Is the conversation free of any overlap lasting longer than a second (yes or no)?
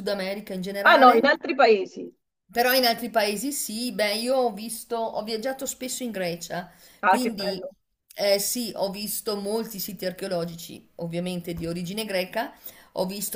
yes